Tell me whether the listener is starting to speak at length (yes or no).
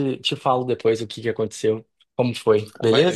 yes